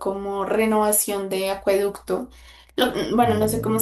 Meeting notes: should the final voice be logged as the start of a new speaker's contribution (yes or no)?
no